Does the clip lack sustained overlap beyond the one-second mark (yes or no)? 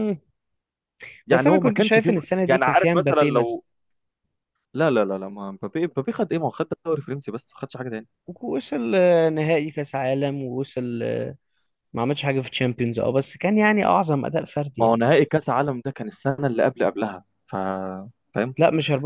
no